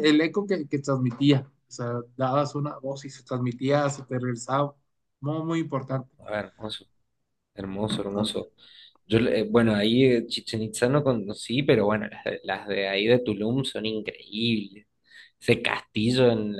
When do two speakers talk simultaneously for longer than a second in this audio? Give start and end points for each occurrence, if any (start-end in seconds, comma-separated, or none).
none